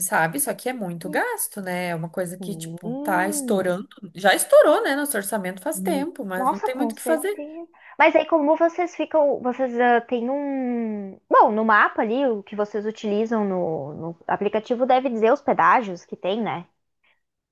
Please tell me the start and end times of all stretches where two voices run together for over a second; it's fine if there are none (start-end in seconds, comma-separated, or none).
2.4-3.7, 5.7-7.3